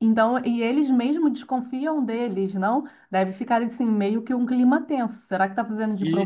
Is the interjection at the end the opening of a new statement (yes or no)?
no